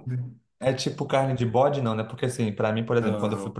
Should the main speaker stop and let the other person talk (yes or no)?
no